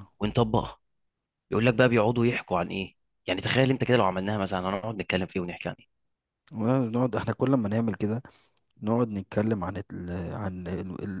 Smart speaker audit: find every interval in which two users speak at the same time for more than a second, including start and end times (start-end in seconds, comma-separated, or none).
none